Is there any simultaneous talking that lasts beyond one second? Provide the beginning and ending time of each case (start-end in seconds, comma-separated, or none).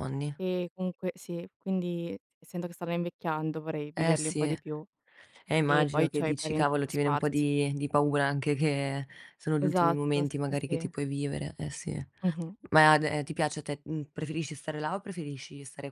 5.7-7.4, 9.6-10.9